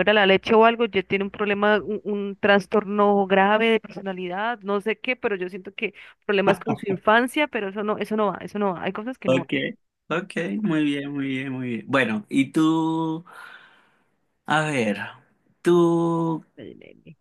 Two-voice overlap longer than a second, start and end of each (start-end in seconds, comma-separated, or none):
none